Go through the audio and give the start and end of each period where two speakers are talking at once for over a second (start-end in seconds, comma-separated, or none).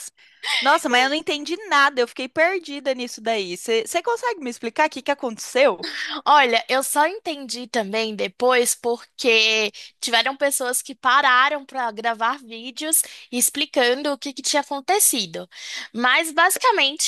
none